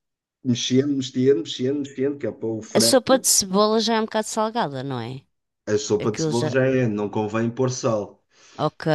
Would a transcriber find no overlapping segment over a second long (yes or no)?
yes